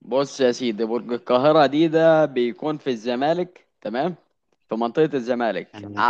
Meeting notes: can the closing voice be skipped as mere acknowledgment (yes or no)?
yes